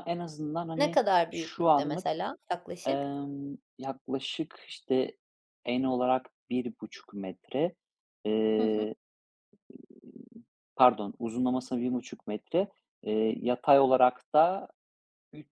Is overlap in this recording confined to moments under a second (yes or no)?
no